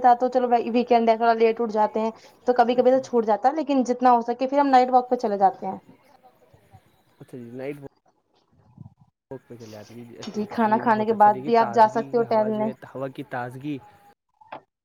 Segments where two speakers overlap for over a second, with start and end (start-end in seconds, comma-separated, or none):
10.7-12.7